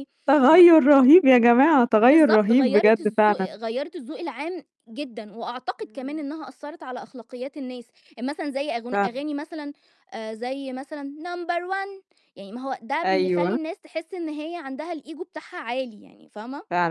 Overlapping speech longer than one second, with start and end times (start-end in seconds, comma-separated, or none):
2.0-3.6